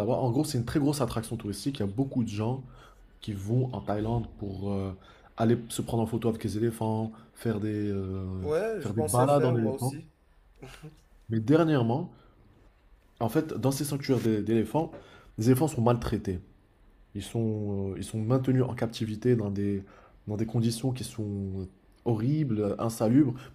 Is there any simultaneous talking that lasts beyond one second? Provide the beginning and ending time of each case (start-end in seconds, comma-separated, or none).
8.4-9.9